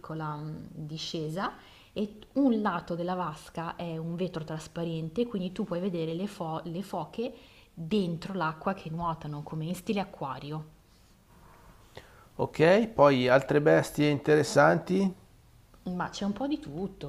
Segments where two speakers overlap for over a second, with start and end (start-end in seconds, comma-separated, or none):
none